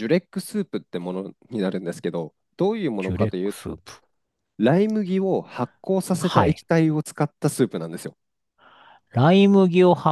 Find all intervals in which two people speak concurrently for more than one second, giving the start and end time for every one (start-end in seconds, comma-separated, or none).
none